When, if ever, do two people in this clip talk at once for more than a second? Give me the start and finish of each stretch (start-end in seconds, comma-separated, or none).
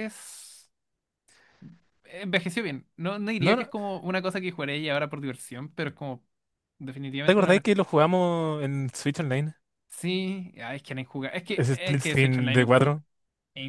11.6-12.9